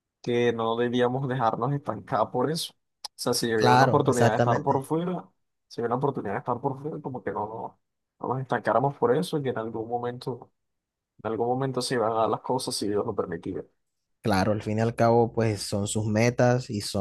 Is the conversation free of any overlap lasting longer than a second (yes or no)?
no